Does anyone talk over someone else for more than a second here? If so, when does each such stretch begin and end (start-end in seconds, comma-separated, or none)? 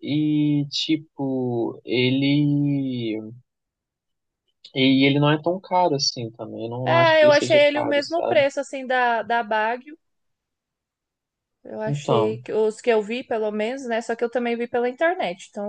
6.8-8.4